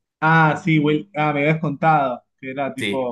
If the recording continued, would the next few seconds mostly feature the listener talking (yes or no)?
yes